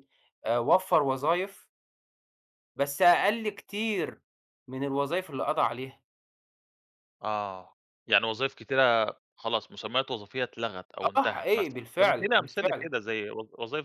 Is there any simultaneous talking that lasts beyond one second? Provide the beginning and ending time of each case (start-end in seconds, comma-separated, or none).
11.2-12.9